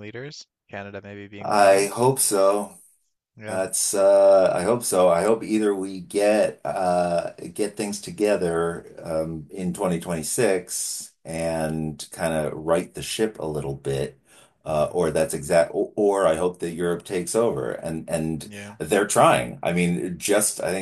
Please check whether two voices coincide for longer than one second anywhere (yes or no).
no